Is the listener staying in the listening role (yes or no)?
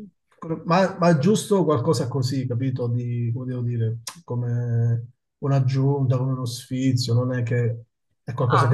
yes